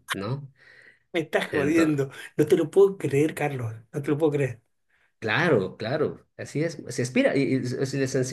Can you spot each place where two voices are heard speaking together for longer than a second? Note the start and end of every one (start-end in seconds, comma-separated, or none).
none